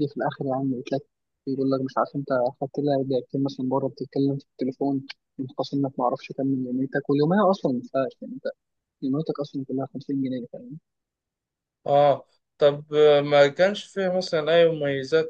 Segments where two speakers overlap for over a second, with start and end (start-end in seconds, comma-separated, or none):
none